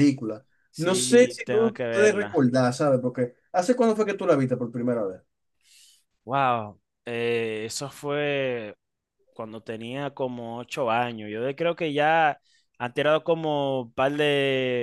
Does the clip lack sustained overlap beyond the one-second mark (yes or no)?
no